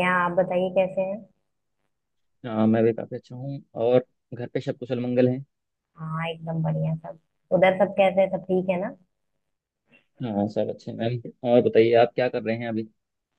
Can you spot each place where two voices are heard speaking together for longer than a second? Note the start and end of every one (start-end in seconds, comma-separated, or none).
none